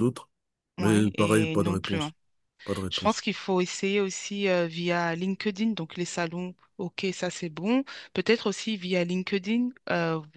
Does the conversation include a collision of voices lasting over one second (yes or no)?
yes